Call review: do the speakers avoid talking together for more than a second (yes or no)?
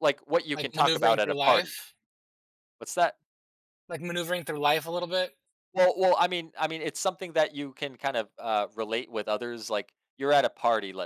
no